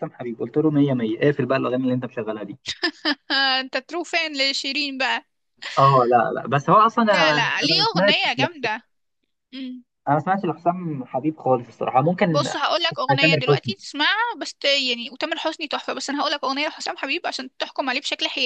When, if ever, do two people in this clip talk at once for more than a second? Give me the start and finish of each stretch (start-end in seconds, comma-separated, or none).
7.0-8.7, 12.3-13.7